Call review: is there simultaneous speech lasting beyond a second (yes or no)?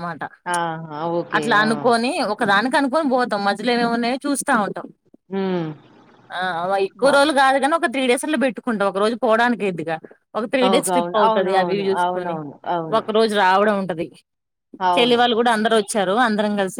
yes